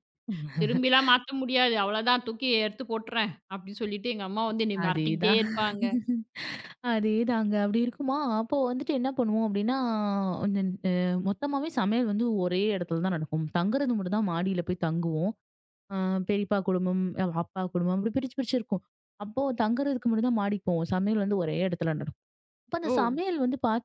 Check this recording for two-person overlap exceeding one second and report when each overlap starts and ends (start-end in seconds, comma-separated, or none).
none